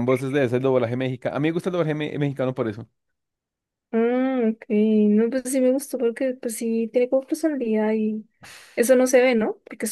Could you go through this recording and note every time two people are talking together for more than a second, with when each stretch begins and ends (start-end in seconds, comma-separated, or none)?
none